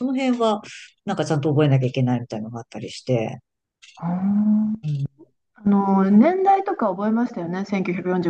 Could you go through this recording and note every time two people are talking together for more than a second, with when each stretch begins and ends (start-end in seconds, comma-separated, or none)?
none